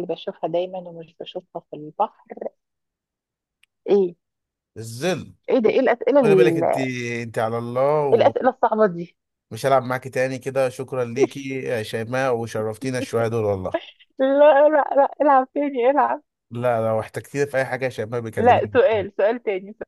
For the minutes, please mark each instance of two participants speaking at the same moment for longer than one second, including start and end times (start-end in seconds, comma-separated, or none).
none